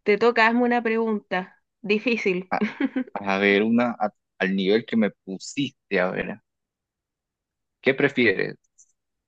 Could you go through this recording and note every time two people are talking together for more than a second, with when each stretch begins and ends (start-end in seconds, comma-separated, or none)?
none